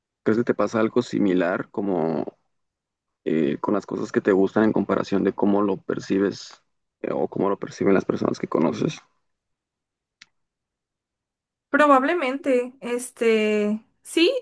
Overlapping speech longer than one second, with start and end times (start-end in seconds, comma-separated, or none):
none